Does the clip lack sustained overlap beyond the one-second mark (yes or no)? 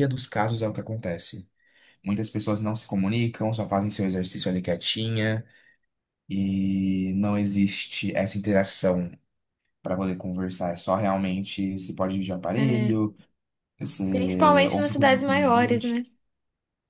no